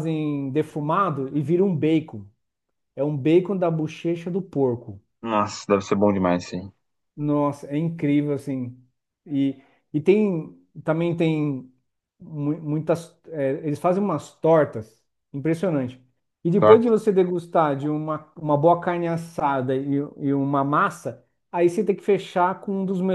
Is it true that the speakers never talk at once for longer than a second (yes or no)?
yes